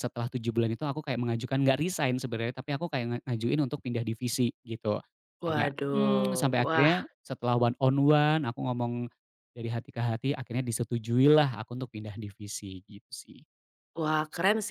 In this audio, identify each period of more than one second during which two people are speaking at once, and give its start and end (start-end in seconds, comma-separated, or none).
5.5-6.9